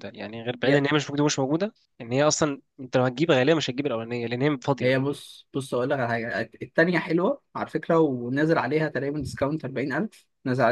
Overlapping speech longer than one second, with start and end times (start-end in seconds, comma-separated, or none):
none